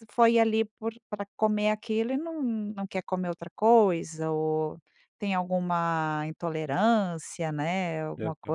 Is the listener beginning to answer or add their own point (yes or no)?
yes